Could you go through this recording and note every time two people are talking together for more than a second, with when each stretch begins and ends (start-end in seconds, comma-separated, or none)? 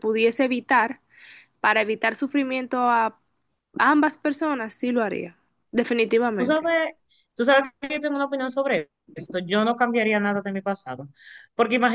none